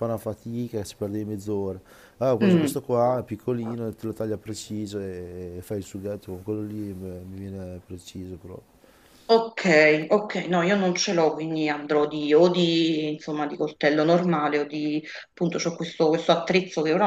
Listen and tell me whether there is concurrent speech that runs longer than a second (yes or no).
no